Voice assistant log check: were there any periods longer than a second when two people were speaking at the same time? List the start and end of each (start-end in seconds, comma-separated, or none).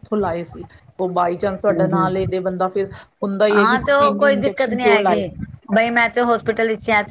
3.6-5.2